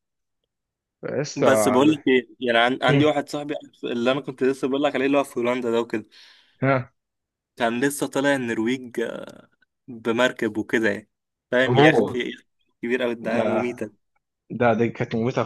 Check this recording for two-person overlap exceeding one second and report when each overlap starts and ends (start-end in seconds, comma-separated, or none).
none